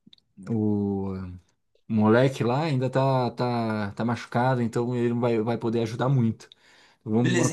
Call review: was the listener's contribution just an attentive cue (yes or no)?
no